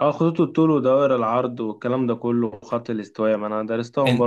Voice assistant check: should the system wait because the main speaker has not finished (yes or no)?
no